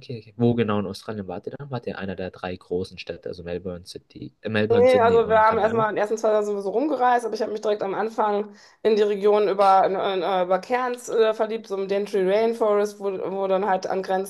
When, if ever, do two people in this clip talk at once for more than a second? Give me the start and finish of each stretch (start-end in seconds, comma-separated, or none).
4.7-5.9